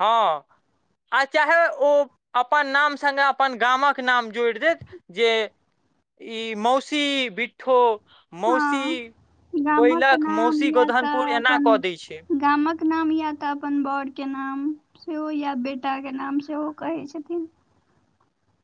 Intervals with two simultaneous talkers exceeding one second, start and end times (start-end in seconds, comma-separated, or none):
9.8-11.7